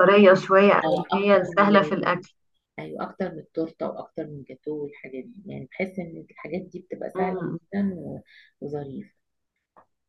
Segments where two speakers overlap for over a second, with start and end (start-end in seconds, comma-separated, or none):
0.8-2.1